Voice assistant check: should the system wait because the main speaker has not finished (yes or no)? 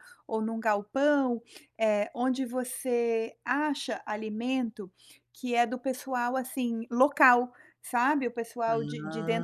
yes